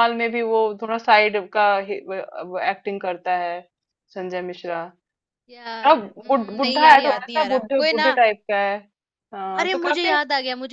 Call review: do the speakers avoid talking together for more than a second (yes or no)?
no